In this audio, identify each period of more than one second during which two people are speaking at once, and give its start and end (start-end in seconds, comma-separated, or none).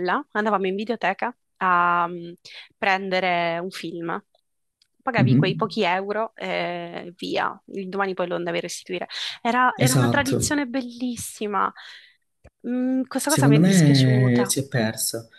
13.2-14.5